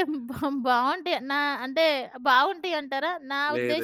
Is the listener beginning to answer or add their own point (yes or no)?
no